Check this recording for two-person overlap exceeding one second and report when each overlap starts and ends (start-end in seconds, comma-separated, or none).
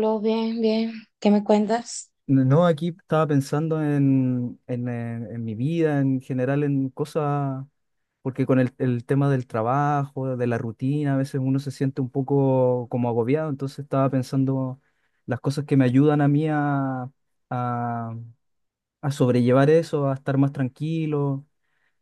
none